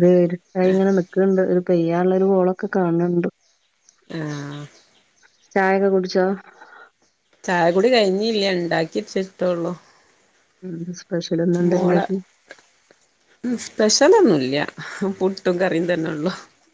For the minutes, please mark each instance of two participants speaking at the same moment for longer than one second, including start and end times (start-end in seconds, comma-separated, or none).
none